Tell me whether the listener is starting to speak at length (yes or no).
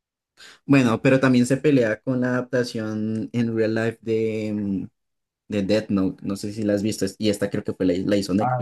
yes